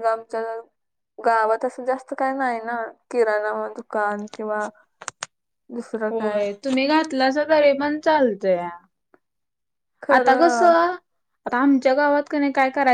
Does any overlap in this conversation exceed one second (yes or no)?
no